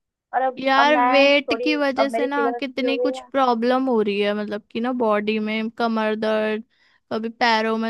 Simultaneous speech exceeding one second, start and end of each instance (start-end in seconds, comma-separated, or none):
0.6-3.3